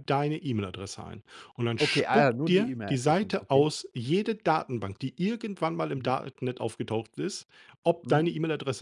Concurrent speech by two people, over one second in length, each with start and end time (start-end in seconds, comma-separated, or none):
1.8-3.6